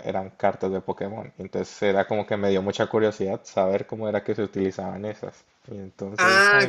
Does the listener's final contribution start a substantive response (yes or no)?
yes